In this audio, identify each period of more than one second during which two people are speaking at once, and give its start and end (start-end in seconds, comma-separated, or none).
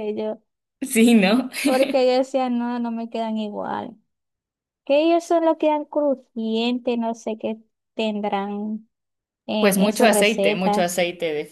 9.6-10.9